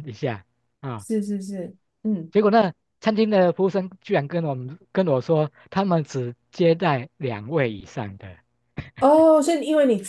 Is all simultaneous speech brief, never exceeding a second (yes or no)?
yes